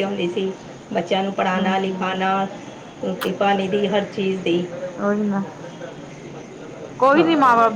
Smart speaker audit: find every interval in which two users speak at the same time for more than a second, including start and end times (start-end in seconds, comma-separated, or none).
none